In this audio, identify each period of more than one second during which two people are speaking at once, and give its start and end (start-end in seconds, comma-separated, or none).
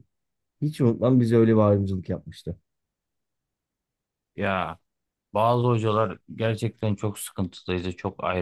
none